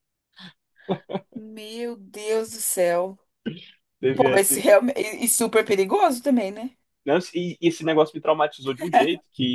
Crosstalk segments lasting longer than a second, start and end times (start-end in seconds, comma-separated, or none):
none